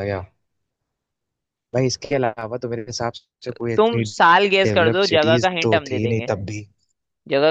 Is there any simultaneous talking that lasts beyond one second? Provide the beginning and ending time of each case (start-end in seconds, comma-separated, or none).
3.8-6.3